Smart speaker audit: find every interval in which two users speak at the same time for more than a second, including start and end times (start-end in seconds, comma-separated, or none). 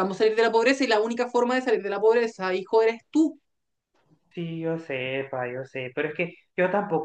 none